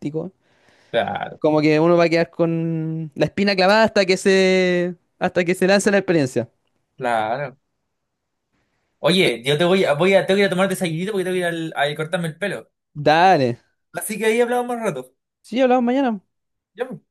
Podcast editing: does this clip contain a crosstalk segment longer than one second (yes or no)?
no